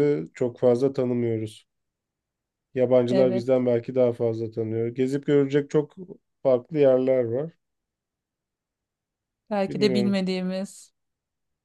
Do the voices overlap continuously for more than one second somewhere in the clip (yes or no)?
no